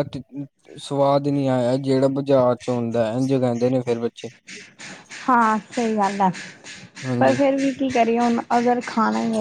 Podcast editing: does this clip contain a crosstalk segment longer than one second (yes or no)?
no